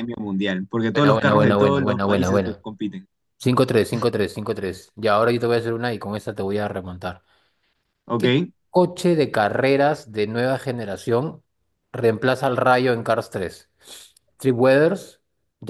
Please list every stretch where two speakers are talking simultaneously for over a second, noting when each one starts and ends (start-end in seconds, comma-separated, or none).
0.9-2.6